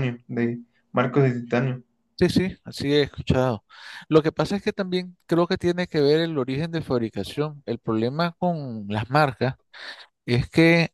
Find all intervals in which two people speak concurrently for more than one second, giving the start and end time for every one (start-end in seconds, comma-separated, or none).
none